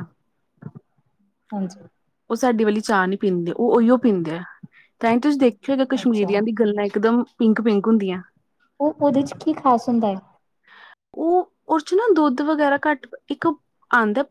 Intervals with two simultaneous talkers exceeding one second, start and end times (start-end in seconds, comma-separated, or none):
none